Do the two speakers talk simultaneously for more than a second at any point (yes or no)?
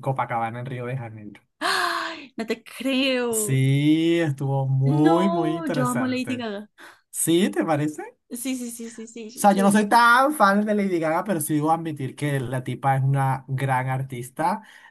yes